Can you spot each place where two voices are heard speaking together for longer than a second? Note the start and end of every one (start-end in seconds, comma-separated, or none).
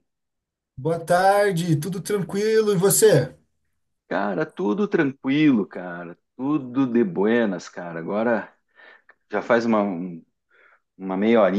none